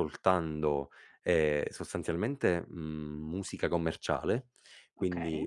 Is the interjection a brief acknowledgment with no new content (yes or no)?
yes